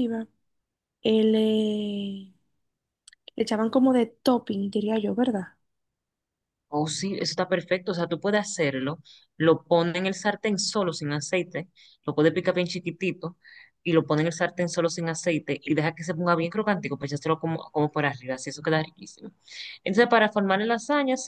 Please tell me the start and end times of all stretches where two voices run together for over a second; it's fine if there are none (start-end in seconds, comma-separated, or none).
none